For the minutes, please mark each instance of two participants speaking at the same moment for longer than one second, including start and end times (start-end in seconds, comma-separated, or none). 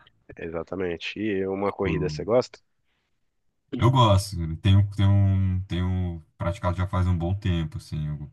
none